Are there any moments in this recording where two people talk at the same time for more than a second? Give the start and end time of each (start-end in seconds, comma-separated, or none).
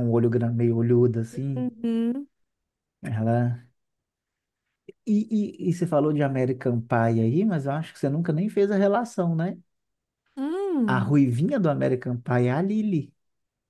none